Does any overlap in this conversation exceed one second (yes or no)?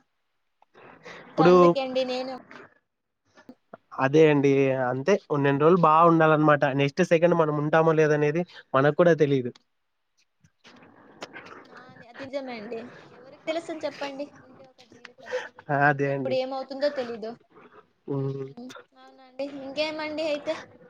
no